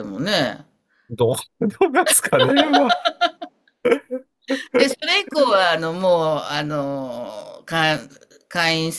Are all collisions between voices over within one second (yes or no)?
yes